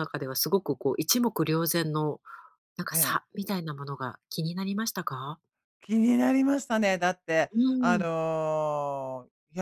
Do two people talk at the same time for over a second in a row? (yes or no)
no